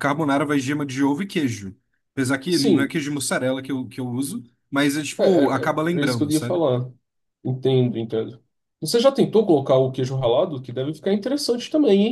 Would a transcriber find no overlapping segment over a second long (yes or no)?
no